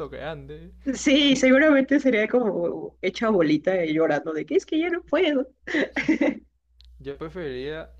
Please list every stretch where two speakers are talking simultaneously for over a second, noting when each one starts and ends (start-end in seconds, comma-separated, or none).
none